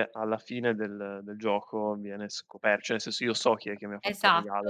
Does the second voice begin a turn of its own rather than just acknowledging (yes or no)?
yes